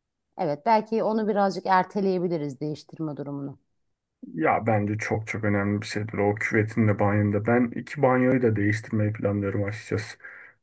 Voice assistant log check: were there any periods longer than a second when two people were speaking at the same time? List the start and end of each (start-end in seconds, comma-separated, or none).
none